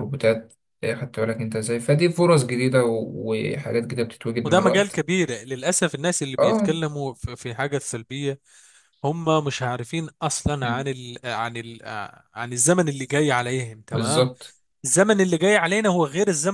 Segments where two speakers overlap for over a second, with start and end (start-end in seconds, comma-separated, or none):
none